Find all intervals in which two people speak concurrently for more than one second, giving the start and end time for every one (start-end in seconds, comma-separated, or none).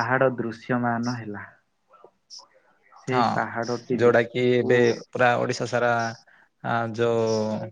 3.1-4.7